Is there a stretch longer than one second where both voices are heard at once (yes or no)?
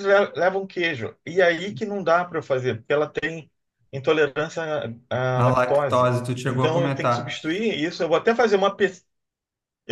yes